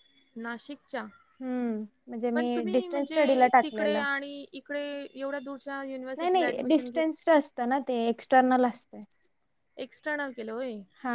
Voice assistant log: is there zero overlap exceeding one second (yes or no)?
no